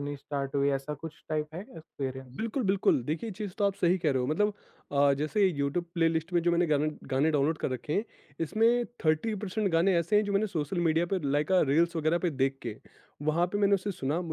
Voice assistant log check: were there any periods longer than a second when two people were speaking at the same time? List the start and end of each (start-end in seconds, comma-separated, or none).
none